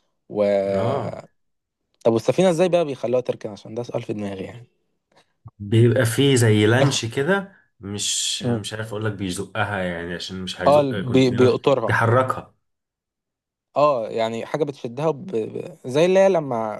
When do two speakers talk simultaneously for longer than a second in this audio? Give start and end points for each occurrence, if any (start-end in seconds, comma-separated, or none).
10.7-12.0